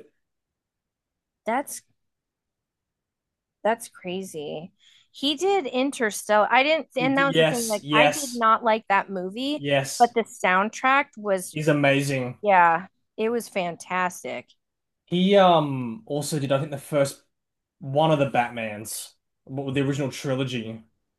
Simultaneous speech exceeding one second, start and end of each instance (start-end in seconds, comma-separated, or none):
7.0-8.4